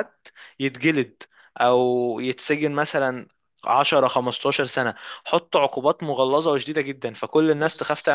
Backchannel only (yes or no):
yes